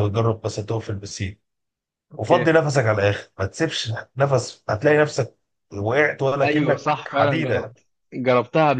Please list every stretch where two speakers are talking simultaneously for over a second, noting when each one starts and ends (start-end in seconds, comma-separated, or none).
6.4-7.7